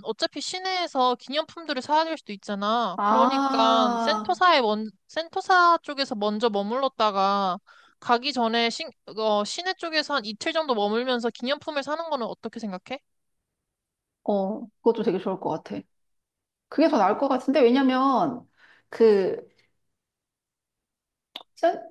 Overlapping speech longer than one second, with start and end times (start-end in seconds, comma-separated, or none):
3.0-4.4